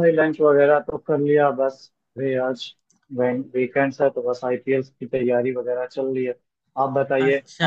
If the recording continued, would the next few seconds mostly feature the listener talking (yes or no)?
yes